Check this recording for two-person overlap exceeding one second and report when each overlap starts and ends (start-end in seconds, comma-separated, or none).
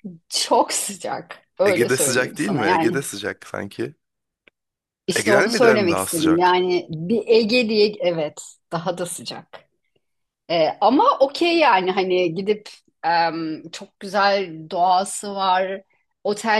1.6-3.0, 5.2-6.6